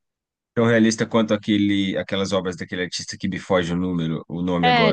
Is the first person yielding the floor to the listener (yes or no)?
yes